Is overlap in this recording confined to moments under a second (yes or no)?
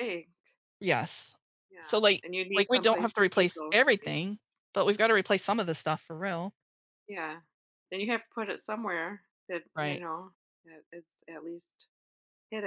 no